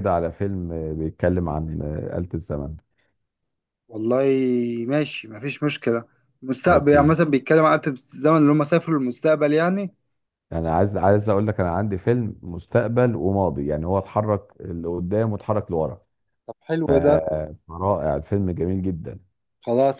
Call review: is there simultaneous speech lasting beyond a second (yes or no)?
no